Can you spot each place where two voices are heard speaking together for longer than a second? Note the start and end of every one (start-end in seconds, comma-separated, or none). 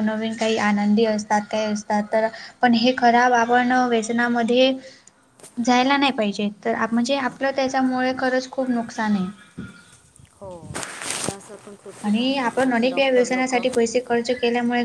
12.0-13.6